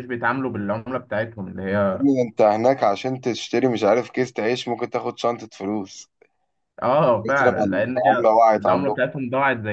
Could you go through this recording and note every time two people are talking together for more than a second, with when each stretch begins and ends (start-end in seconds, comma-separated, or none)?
7.2-9.0